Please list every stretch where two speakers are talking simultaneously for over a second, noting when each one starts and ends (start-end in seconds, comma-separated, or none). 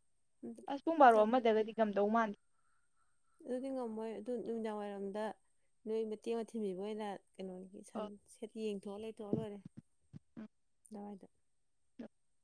none